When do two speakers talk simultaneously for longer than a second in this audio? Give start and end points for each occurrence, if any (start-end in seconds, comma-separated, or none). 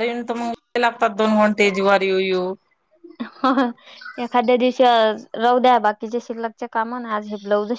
none